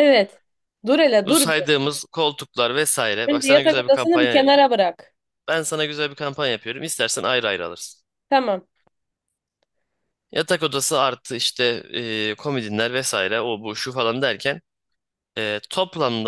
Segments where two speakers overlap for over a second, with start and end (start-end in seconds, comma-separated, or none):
3.3-4.5